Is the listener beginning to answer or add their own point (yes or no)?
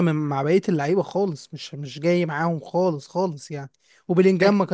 no